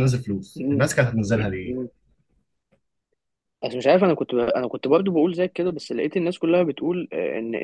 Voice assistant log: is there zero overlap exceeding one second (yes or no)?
yes